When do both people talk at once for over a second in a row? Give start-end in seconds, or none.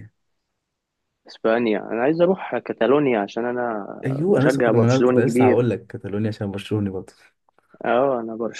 4.3-5.6